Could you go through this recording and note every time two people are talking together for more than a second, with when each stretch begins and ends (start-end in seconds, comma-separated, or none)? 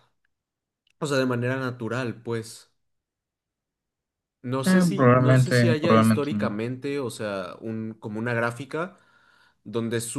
4.7-6.6